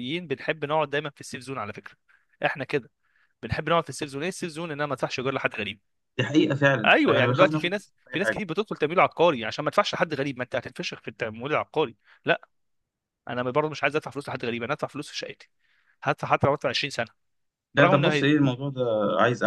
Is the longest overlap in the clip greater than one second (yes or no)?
yes